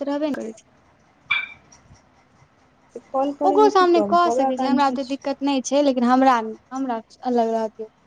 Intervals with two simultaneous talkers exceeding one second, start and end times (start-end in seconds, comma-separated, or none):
3.5-5.3